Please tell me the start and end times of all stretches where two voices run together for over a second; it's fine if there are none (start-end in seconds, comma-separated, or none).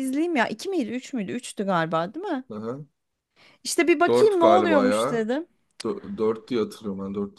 4.1-5.3